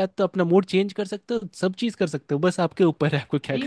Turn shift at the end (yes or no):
yes